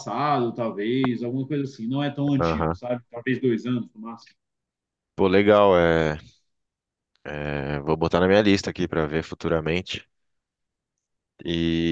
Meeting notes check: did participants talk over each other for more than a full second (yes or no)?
no